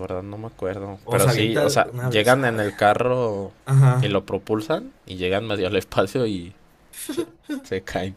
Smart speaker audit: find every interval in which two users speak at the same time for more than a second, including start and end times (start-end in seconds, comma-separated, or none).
1.0-2.6